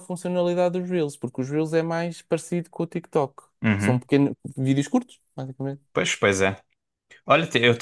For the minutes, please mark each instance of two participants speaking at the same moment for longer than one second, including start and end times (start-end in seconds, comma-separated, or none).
none